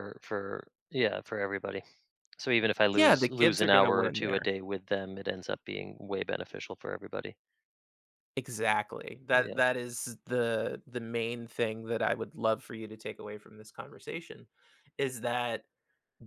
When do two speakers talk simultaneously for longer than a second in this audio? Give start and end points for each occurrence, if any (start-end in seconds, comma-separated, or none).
2.9-4.5